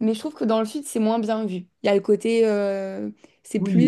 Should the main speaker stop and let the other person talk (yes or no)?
yes